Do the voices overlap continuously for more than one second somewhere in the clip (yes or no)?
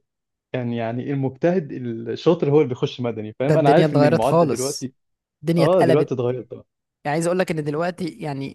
yes